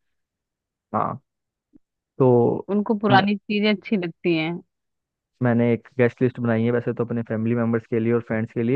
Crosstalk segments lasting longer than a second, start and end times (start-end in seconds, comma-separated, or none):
none